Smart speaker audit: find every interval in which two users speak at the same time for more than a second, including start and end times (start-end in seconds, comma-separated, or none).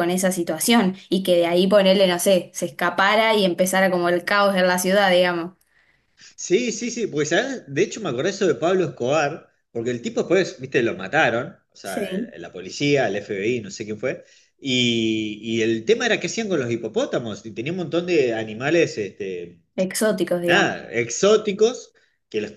none